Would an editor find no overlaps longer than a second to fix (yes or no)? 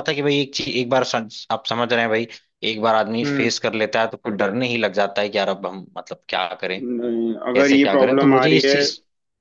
no